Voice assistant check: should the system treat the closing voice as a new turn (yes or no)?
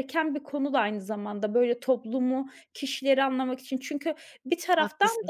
no